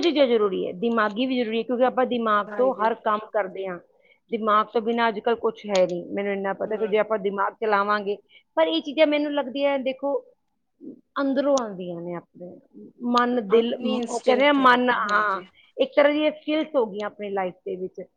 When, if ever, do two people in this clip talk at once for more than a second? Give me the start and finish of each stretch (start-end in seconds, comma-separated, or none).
13.5-15.4